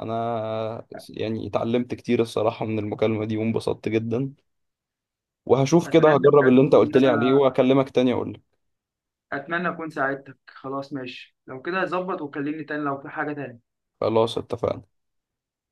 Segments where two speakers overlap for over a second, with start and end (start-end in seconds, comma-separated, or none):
5.8-7.4